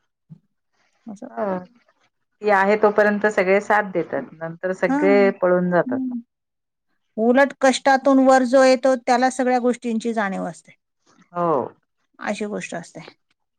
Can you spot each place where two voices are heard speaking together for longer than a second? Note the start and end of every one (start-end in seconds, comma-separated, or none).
none